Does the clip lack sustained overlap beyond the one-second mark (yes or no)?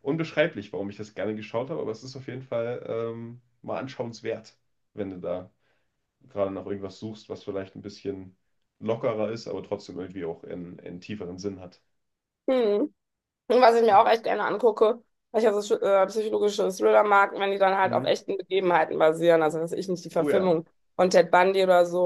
yes